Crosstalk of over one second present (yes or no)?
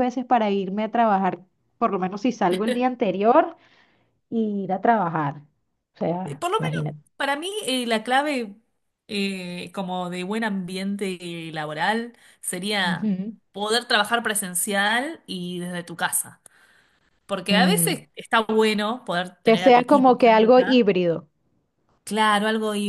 yes